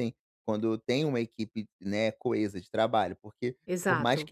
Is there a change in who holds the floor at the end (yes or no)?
no